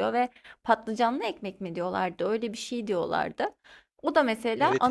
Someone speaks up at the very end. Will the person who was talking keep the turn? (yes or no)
no